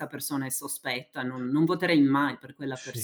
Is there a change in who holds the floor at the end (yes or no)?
yes